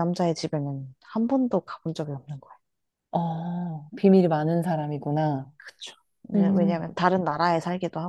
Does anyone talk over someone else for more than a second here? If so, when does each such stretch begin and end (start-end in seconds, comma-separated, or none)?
none